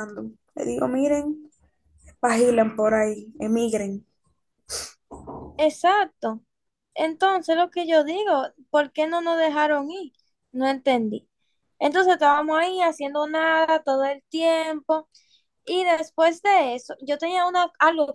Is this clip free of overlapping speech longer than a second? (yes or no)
yes